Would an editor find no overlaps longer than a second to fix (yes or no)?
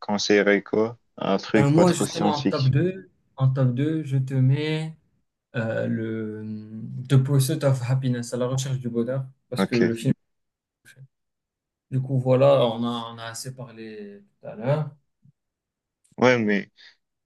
no